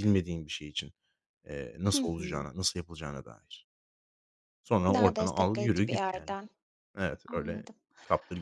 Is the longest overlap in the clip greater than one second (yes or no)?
yes